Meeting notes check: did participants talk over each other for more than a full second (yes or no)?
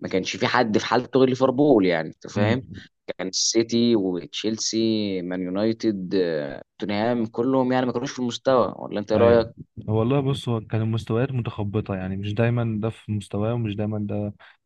no